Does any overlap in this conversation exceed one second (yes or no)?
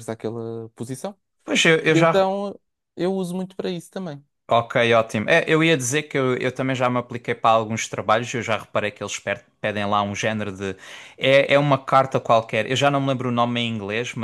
no